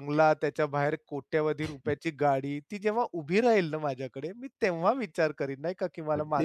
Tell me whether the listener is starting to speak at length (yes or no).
no